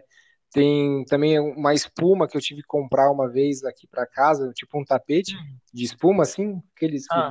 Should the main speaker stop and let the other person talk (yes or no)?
no